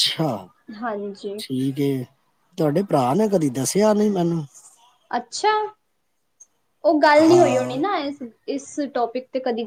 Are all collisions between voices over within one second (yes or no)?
yes